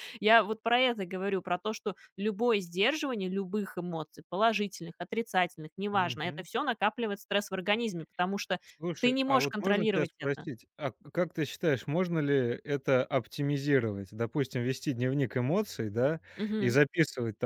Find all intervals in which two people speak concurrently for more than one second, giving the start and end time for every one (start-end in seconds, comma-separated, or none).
9.0-10.5